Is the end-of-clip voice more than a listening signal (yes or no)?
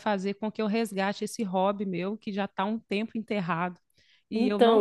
no